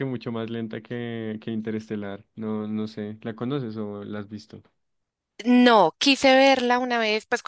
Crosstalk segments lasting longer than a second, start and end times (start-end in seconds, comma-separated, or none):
none